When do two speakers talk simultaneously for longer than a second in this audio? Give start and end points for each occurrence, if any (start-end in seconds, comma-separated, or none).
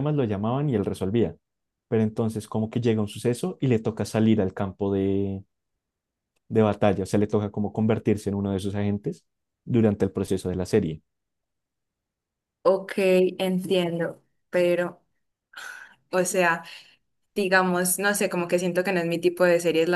none